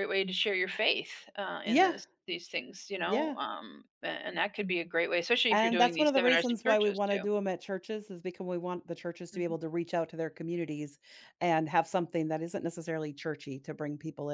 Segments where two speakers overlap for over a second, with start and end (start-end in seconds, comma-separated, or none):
5.5-7.2